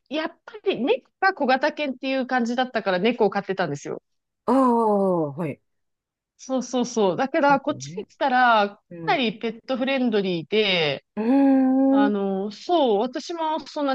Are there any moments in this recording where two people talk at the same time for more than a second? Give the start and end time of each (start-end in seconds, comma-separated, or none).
none